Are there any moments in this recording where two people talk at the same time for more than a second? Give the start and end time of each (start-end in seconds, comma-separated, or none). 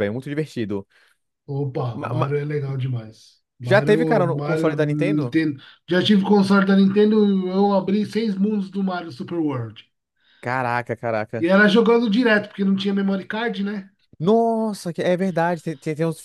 3.6-5.4